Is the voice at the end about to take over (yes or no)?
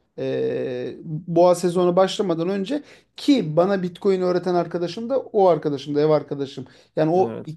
no